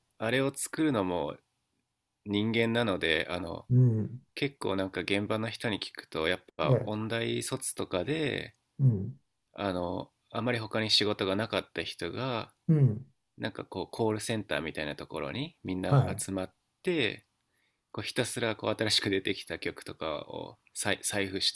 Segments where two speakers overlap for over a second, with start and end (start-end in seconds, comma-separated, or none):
none